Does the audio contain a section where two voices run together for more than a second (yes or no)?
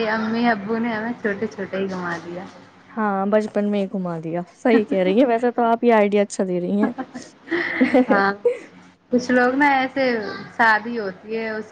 no